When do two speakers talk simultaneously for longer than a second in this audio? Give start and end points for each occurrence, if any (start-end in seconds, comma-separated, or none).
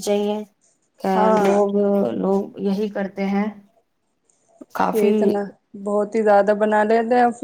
none